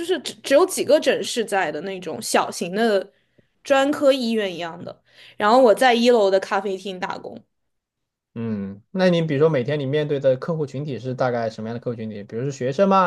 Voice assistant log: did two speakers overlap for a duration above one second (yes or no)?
no